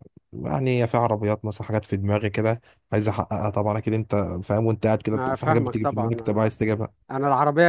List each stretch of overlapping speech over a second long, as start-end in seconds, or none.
5.1-6.5